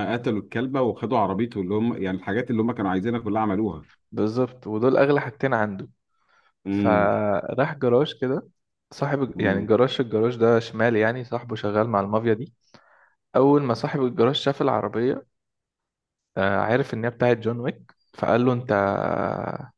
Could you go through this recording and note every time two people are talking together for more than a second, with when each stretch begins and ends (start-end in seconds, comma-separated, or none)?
none